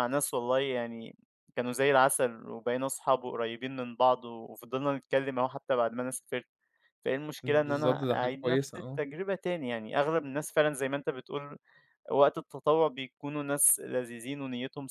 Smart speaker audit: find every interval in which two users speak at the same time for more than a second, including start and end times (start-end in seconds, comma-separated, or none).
7.4-9.0